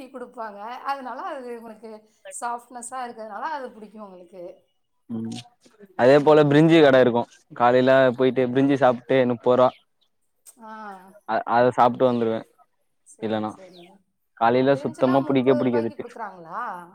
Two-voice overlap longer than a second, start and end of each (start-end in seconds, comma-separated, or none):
14.8-16.1